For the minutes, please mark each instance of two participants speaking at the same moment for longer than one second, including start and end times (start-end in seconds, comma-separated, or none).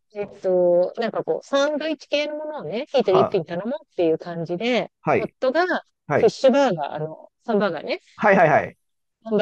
none